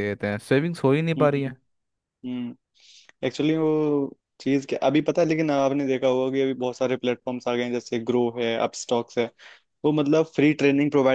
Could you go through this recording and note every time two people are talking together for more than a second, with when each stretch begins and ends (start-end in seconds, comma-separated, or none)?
none